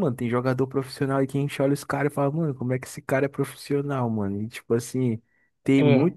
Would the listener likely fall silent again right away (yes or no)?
yes